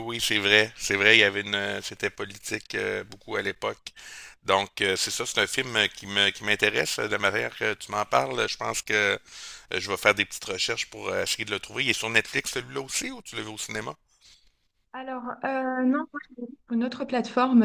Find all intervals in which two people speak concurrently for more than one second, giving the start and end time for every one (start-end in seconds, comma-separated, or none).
none